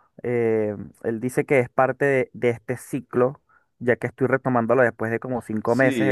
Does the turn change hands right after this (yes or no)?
yes